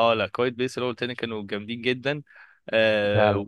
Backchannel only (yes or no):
yes